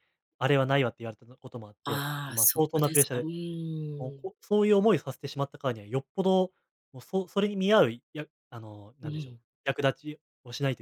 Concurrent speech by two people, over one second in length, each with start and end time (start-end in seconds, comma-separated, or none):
1.8-3.3